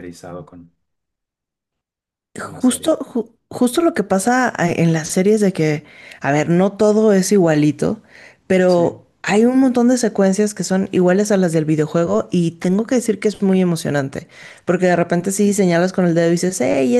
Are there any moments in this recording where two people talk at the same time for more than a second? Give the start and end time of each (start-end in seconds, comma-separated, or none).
none